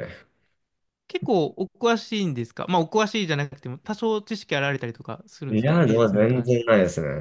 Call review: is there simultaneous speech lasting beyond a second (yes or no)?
yes